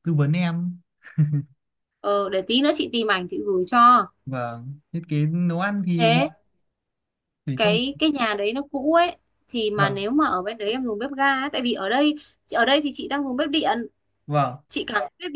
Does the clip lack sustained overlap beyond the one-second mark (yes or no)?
yes